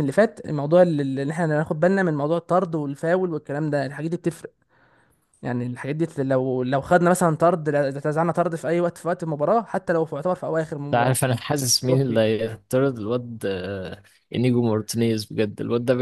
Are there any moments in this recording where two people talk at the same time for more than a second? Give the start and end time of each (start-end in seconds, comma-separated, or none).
none